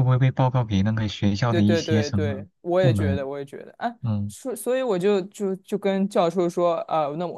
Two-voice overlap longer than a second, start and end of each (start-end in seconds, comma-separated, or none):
1.5-3.3